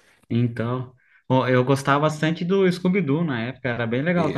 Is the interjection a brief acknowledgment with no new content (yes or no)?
no